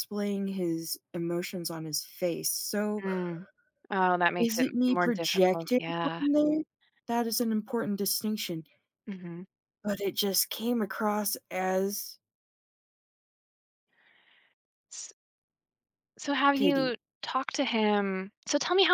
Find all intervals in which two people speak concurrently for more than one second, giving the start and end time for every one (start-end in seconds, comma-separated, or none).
4.4-6.2